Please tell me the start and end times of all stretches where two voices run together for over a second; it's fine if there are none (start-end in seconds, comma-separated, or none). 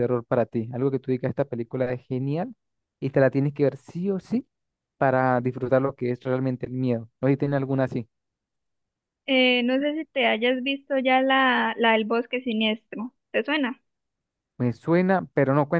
none